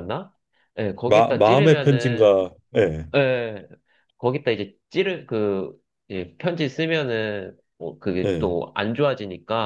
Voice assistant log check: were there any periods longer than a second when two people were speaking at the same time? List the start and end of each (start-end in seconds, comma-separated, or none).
1.1-2.4